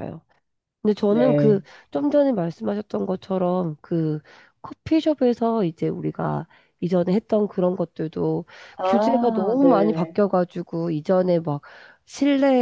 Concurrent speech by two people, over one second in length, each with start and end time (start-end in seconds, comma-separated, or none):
8.8-10.2